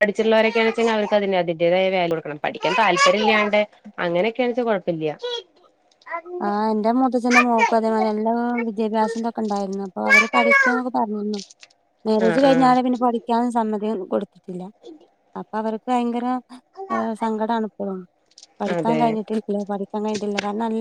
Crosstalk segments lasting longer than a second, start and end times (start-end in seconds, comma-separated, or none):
none